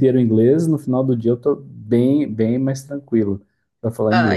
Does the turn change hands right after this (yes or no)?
yes